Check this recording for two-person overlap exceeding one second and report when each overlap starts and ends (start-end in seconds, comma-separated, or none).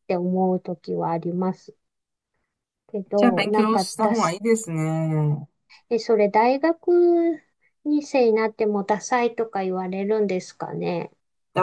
3.2-4.4